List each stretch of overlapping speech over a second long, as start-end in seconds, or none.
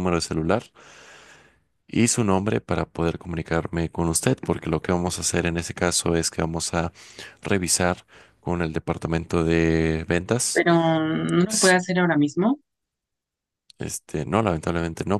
none